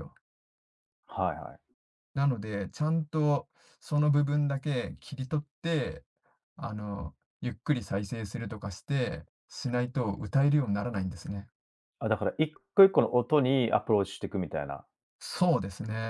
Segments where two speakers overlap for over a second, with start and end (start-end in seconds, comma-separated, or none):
none